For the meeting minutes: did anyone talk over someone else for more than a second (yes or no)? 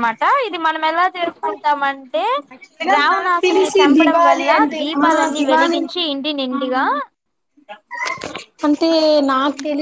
yes